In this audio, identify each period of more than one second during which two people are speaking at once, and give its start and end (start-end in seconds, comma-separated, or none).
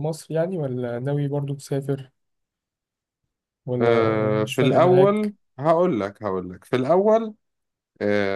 3.8-5.3